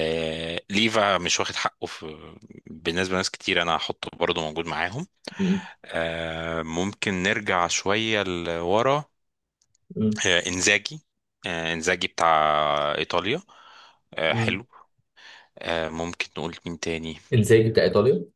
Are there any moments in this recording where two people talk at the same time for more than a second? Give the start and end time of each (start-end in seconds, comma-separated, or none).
none